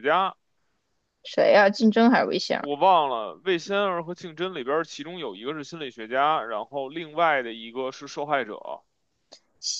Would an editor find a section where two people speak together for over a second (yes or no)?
no